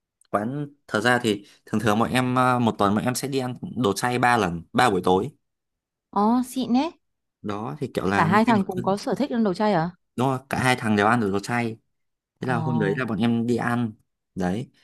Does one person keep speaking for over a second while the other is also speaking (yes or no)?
no